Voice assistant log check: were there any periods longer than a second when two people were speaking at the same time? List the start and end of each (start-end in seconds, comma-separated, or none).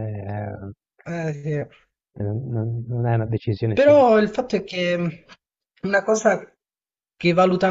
none